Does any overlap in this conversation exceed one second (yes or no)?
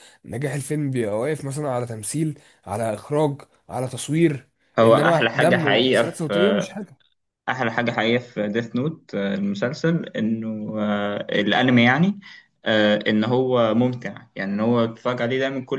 yes